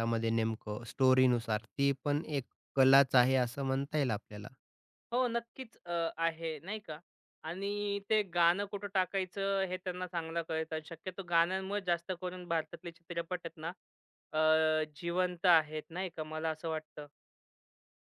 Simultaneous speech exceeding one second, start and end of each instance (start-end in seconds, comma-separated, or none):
none